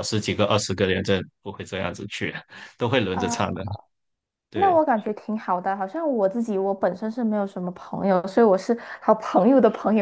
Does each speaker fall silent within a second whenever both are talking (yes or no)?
yes